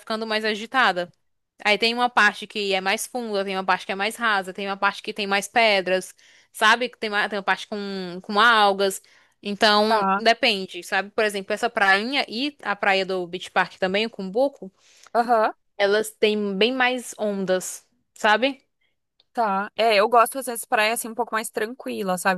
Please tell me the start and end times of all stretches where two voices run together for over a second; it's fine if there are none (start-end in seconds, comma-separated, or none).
none